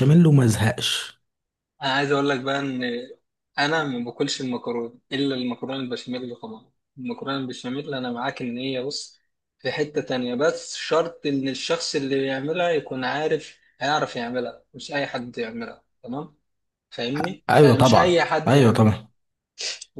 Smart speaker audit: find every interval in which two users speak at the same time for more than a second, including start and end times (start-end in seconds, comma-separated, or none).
17.5-18.9